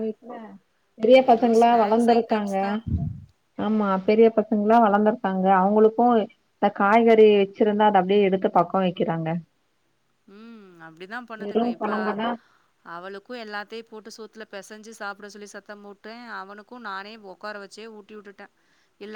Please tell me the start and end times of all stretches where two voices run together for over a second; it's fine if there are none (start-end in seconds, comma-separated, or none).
1.2-2.6